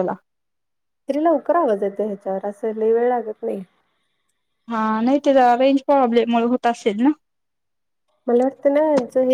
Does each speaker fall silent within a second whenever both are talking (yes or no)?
yes